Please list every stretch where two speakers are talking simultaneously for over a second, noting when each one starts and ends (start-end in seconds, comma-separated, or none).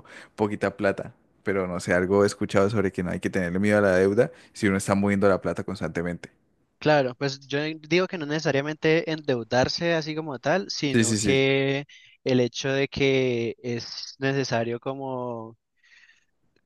none